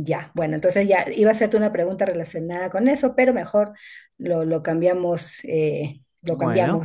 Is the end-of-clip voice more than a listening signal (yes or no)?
no